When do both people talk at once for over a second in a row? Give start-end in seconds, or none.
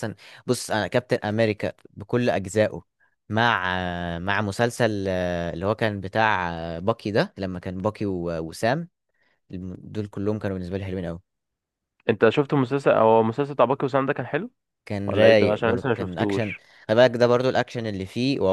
15.1-16.6